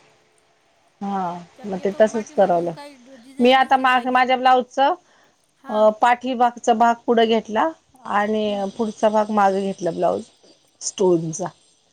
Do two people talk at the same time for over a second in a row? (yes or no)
yes